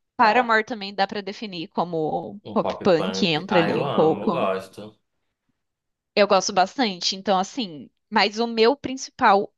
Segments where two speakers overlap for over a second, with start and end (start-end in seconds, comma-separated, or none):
2.4-4.5